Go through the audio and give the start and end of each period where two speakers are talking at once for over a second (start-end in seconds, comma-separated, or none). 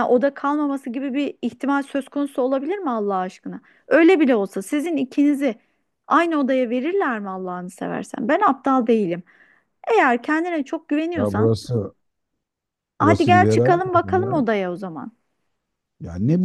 13.0-14.4